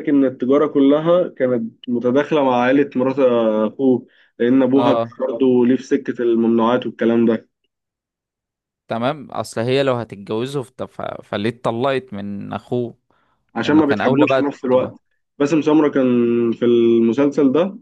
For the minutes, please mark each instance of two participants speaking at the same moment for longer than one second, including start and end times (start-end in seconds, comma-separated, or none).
13.6-14.9